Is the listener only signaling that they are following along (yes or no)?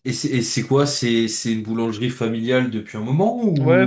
no